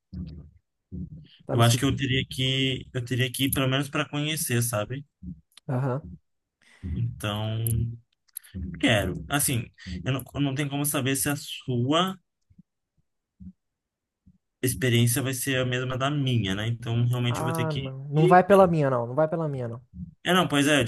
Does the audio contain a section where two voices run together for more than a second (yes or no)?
yes